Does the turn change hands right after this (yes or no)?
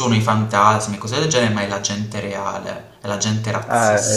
yes